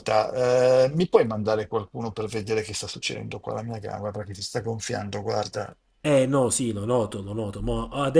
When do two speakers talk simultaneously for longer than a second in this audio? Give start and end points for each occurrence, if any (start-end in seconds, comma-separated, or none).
none